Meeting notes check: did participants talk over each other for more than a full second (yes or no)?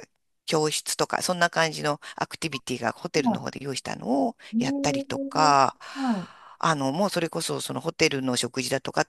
yes